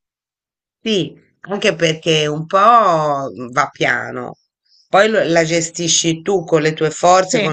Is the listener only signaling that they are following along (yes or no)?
yes